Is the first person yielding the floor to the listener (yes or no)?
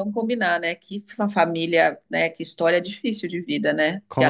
no